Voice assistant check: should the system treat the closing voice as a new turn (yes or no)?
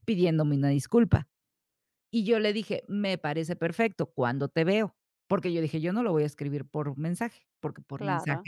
no